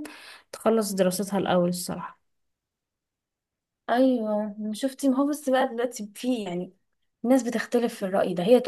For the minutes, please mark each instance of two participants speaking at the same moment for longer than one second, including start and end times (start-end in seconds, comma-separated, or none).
none